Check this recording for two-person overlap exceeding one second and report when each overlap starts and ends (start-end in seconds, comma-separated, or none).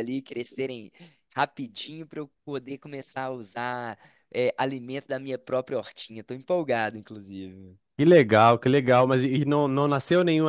none